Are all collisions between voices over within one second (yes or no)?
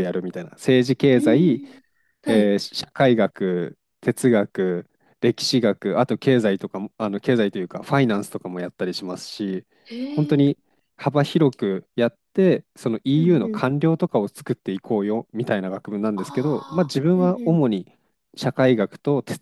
no